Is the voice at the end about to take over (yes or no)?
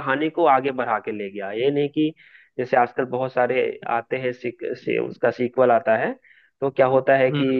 no